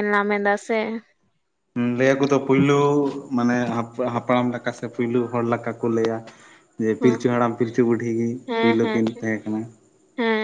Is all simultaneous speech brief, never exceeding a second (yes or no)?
yes